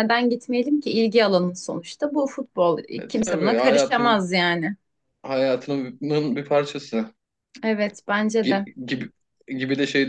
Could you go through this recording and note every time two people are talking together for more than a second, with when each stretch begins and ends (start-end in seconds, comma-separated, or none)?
3.0-4.3